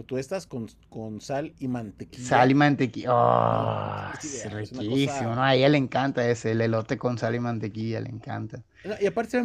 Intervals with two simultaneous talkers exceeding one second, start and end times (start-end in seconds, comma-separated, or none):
3.5-5.4